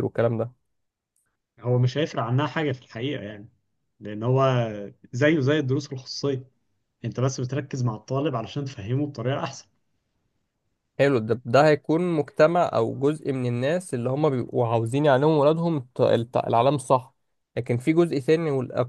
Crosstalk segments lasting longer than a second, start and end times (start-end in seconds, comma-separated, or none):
none